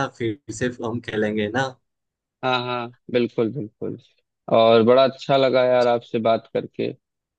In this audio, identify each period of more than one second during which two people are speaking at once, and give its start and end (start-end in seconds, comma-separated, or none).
none